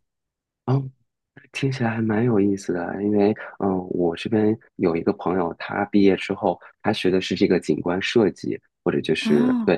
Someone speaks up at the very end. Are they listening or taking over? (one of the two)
listening